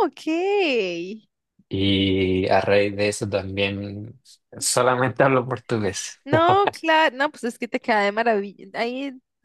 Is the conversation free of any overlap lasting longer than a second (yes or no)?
yes